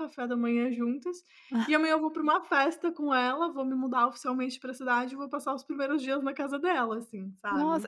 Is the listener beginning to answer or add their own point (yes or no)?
yes